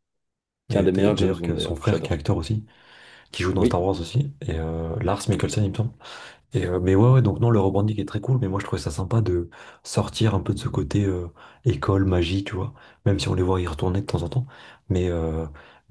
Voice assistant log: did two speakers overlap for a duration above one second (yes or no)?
yes